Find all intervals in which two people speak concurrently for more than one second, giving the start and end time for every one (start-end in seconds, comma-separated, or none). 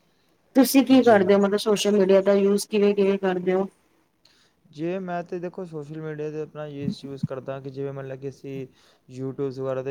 none